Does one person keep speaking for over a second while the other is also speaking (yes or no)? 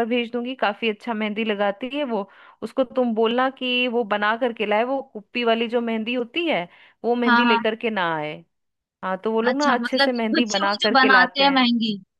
yes